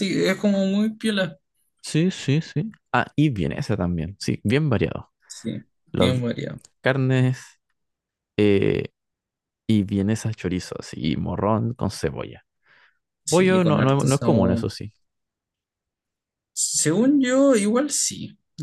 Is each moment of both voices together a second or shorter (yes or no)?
no